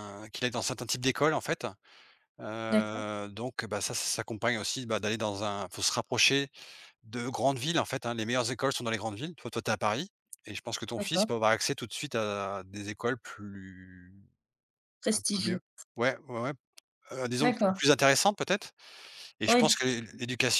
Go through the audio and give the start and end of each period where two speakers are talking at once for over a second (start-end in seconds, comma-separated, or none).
none